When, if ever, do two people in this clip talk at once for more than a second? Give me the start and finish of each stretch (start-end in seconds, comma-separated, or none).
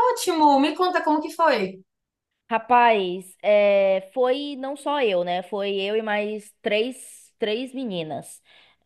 none